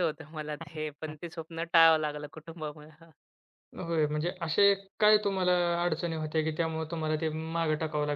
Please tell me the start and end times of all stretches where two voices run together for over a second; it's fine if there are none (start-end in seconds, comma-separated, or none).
none